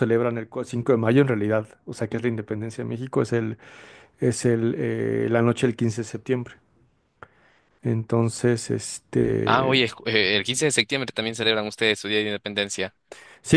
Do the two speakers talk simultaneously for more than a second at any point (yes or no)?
no